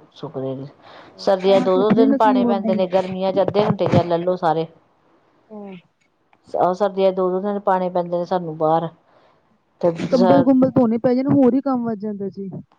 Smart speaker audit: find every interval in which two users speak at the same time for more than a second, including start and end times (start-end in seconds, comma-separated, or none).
1.4-3.0